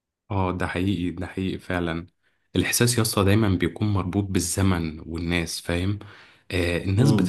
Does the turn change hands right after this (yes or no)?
no